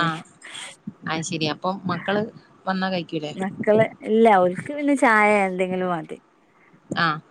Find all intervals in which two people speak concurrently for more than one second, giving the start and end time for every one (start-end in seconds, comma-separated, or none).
none